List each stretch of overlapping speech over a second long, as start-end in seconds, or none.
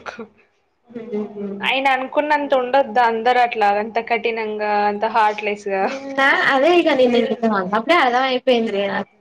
none